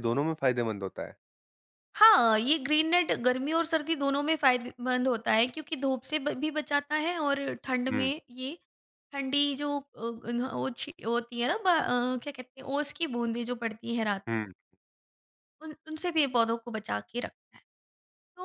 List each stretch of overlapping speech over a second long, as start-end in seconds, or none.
none